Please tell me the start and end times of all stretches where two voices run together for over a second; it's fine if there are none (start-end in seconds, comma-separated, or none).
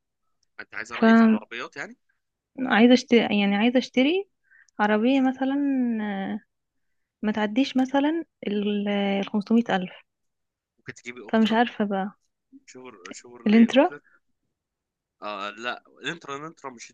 none